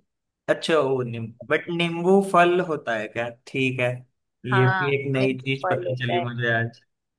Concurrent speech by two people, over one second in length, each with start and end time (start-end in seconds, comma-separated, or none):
4.5-6.2